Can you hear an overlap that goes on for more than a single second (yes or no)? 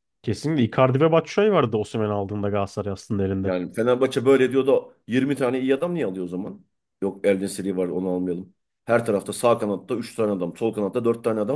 no